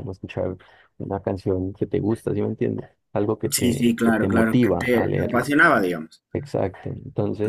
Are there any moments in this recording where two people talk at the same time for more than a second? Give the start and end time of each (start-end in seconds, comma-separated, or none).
3.6-5.5